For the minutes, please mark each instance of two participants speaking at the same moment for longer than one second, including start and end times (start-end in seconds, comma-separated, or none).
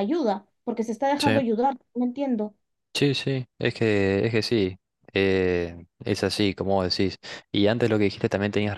none